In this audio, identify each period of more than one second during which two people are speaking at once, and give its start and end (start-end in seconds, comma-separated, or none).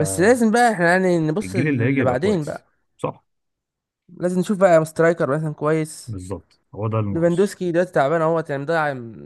1.4-2.7